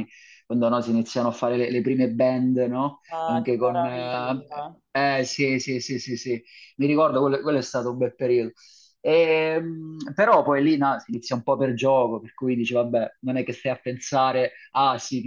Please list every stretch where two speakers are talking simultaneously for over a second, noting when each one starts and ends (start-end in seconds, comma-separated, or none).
3.1-4.4